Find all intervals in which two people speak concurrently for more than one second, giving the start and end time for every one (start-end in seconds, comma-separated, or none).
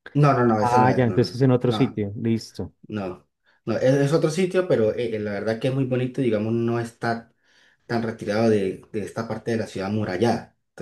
0.6-2.0